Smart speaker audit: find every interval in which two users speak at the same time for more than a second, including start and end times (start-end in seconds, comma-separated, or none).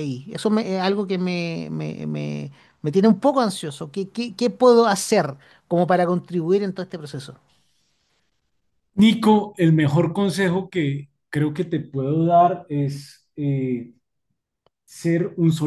none